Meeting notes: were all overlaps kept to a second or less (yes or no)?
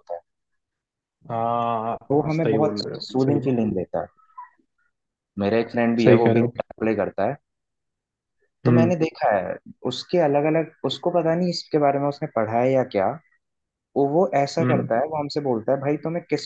no